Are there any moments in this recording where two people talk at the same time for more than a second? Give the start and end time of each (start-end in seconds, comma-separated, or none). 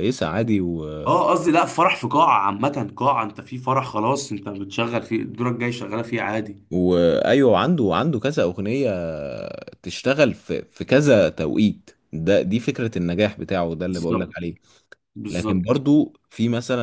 none